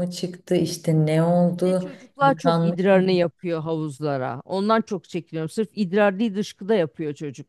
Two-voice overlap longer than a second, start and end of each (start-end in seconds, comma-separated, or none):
1.6-3.3